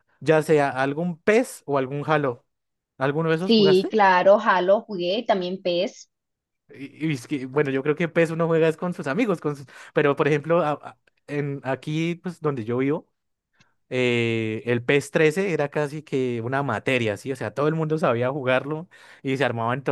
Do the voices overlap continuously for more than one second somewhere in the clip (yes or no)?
no